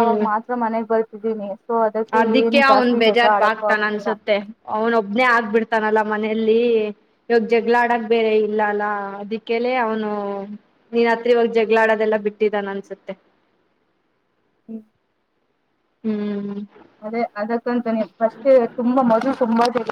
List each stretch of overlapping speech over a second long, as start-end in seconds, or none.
2.2-4.1